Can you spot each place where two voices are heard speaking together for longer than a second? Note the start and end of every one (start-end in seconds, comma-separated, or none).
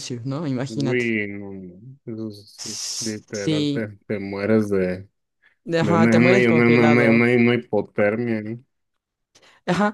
2.6-3.8, 5.8-7.4